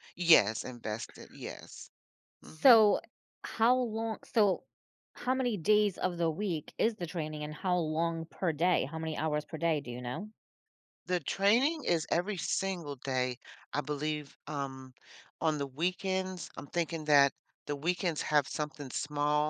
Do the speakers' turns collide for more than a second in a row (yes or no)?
no